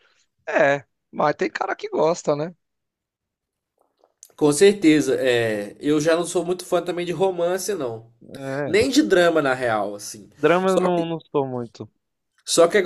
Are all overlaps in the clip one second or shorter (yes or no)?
yes